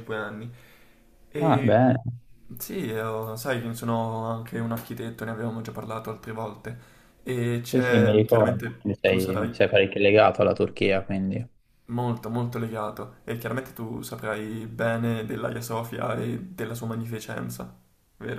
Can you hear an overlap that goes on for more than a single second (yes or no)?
yes